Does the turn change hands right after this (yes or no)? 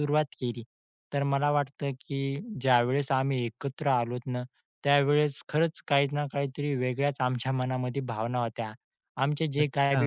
no